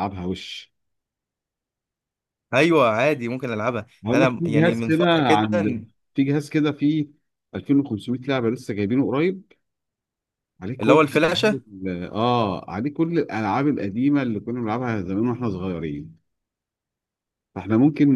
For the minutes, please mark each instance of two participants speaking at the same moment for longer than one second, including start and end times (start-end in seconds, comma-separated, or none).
4.0-5.5